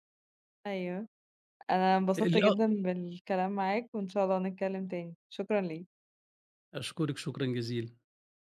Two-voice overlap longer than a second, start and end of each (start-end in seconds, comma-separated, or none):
none